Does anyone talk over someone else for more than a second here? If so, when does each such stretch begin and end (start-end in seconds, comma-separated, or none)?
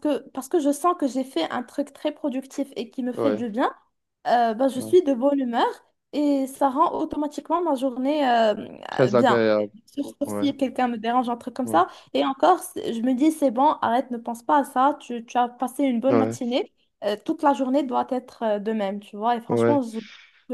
none